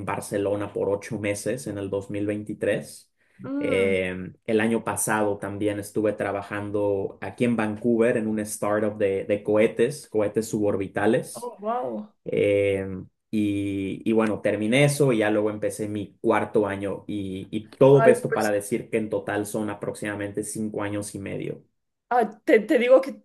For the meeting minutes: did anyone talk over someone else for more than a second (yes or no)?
no